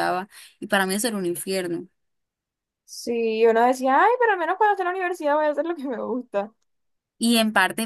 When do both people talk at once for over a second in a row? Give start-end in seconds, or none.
none